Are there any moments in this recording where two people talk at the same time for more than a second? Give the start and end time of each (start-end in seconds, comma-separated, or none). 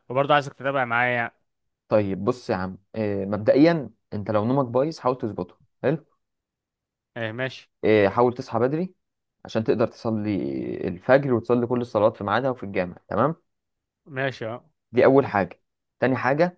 none